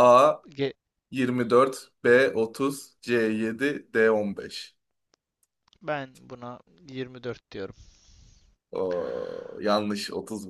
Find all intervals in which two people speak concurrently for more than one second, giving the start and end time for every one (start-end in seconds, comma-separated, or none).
none